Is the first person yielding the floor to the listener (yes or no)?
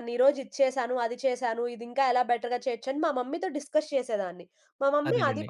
no